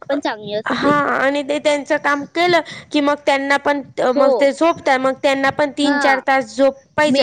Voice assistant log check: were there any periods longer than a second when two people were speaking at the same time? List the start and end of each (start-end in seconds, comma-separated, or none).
none